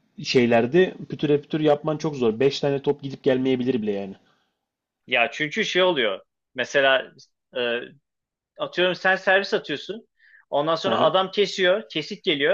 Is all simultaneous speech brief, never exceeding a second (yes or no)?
yes